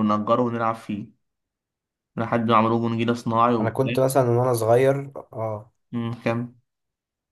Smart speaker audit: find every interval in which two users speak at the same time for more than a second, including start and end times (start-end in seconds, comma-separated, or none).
none